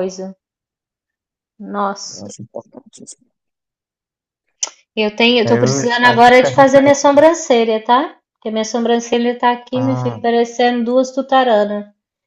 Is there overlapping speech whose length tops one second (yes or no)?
yes